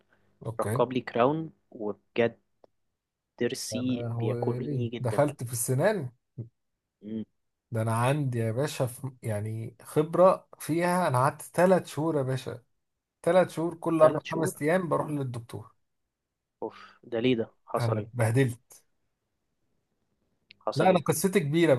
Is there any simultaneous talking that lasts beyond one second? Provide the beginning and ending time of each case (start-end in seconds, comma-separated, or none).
3.7-5.3